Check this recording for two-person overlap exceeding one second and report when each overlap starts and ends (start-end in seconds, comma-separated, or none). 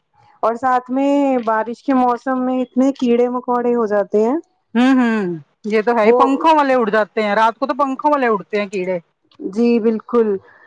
none